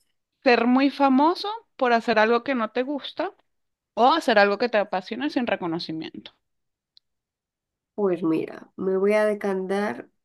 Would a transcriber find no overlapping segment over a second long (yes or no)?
yes